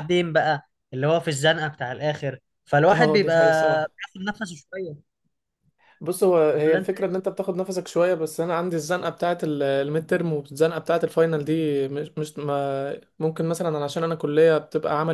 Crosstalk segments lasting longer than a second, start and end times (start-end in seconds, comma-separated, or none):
none